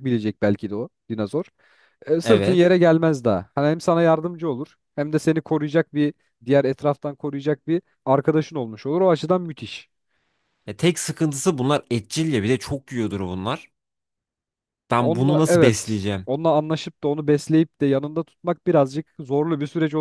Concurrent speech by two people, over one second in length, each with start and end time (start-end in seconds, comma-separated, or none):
15.0-16.3